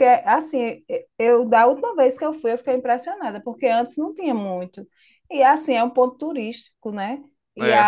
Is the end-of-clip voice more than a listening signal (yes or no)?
no